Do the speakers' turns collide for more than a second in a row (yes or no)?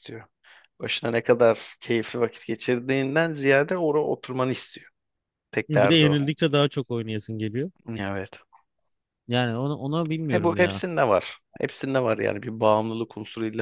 no